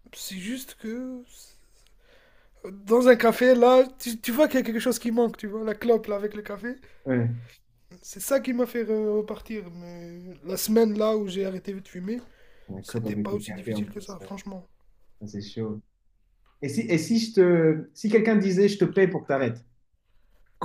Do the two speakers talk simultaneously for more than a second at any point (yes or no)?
yes